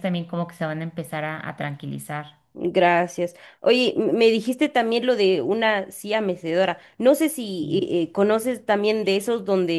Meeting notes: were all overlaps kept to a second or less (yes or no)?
yes